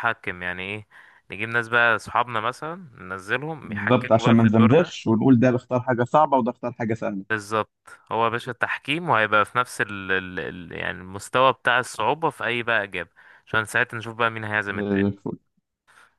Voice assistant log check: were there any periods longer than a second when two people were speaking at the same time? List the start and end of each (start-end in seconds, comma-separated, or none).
3.6-5.0